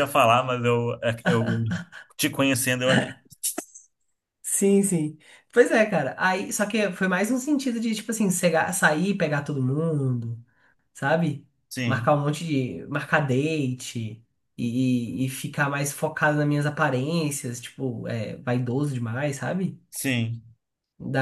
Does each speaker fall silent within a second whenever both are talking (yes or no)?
yes